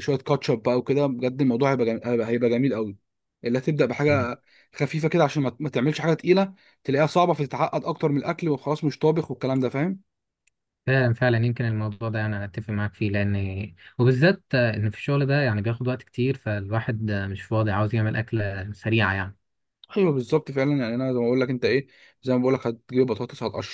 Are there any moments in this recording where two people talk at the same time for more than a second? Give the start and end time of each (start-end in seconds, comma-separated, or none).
none